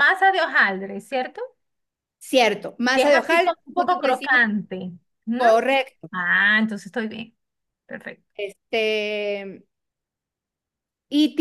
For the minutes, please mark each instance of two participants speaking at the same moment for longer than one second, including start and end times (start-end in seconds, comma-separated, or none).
2.9-4.4